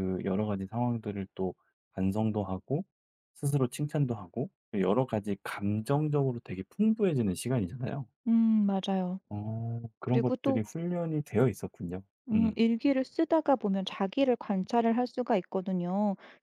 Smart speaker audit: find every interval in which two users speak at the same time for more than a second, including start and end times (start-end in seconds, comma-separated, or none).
none